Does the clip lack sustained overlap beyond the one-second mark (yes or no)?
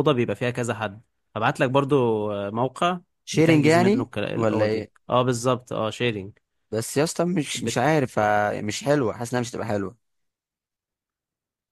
no